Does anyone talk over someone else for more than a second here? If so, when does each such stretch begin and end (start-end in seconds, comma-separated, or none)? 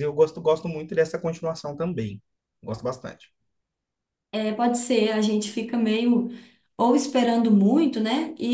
none